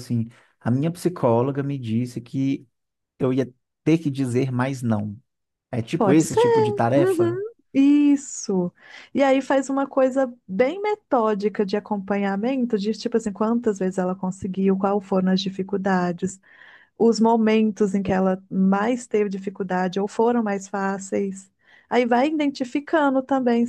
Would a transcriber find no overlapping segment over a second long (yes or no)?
yes